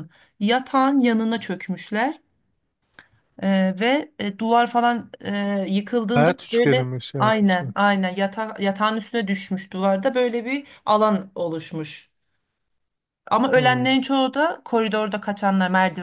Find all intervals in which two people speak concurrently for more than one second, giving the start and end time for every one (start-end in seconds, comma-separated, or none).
6.1-7.7